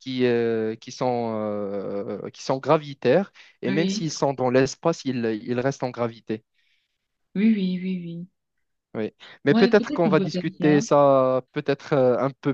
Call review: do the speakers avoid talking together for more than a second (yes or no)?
no